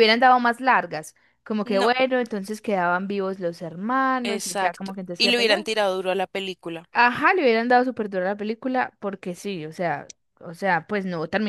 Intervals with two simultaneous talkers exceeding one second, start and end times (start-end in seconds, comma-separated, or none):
4.2-5.7